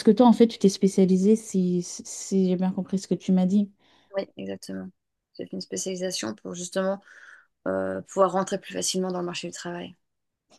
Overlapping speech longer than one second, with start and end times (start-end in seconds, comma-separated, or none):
none